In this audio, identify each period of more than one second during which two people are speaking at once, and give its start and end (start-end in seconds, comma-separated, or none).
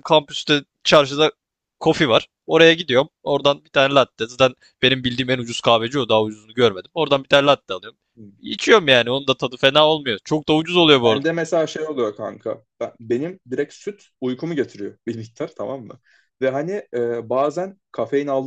none